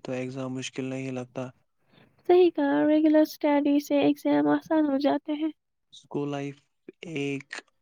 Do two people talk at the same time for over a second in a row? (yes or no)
no